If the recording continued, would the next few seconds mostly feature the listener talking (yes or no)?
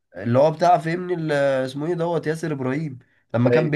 no